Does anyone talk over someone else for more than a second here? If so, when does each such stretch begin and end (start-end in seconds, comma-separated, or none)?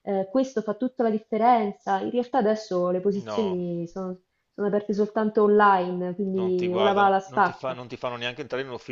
6.3-7.8